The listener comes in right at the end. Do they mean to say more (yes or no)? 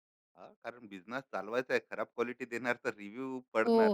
yes